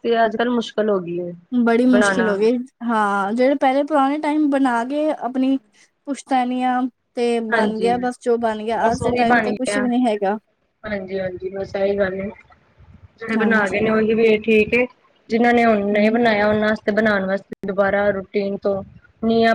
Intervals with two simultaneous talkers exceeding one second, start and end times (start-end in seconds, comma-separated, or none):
none